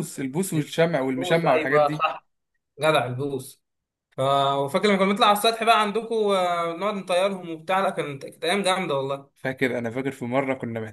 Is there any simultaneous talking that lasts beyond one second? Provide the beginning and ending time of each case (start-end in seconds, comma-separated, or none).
0.5-2.0